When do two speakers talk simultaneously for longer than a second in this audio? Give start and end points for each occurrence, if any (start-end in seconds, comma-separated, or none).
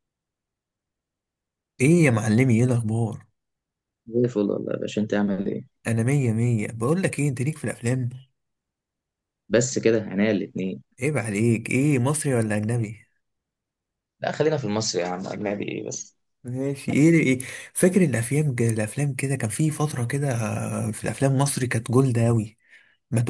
none